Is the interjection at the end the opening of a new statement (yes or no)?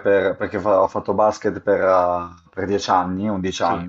no